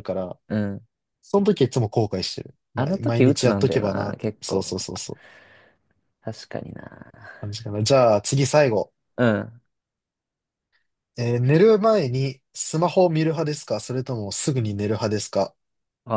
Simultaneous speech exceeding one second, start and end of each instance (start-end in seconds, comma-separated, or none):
2.8-4.8